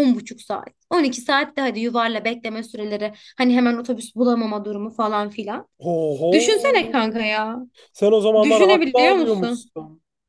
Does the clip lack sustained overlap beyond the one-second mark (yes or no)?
no